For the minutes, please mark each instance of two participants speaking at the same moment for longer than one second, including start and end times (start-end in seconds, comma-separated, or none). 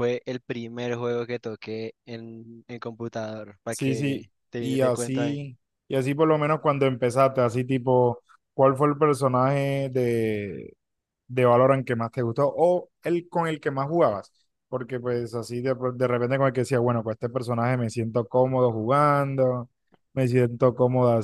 3.7-5.4